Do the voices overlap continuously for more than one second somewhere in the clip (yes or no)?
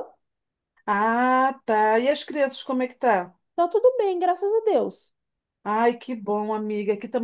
no